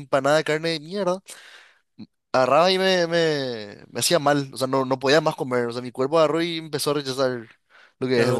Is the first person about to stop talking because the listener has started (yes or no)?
yes